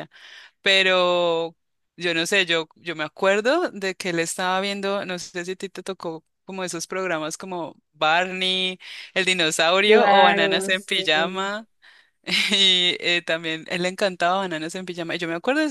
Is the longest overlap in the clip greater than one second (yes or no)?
yes